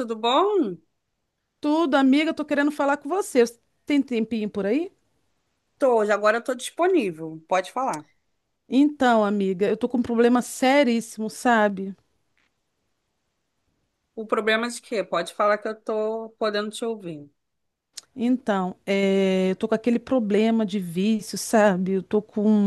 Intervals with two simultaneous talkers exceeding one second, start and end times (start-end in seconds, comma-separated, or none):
none